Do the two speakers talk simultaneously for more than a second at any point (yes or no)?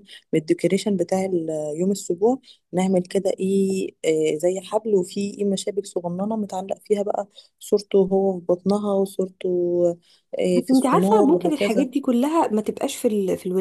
yes